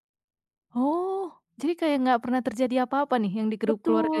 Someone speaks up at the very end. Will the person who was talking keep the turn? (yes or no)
no